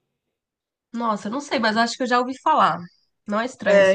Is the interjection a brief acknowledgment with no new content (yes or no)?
no